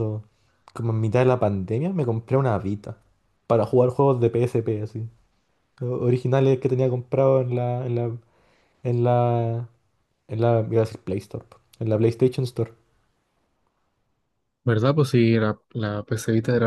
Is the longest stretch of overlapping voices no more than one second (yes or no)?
yes